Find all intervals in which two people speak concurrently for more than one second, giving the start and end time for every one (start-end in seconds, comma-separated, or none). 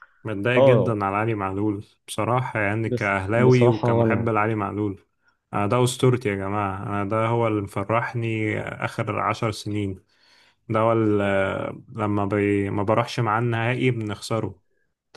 2.9-4.3